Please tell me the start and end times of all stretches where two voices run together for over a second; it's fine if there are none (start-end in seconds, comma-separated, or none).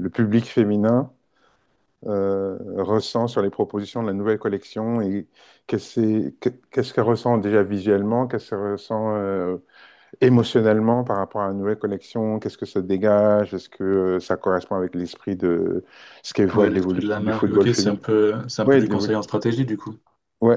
16.5-18.0